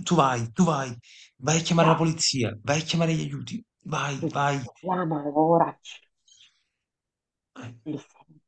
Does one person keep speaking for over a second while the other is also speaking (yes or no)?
no